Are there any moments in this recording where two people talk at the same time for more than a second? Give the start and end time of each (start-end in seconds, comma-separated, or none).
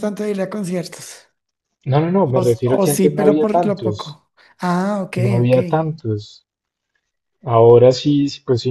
2.2-4.2